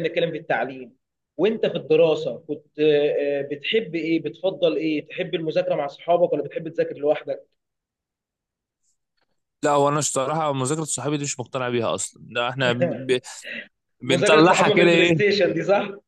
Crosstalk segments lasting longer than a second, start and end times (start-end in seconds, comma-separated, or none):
14.1-15.3